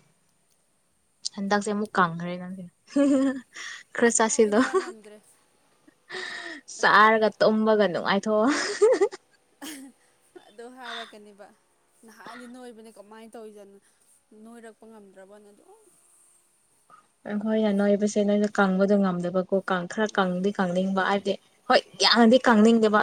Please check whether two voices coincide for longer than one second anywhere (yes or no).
no